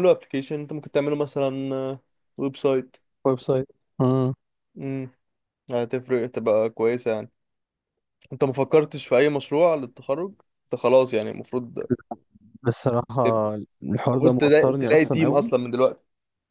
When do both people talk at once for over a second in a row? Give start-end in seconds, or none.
14.1-15.5